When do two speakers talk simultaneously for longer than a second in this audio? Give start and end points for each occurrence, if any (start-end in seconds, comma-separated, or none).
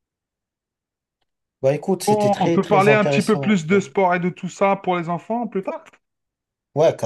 2.1-3.6